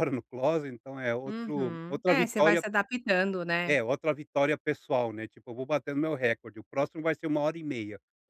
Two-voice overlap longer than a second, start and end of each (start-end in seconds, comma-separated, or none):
1.2-2.6